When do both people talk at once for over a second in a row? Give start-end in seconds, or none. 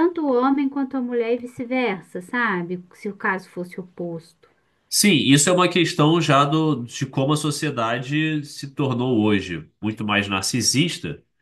none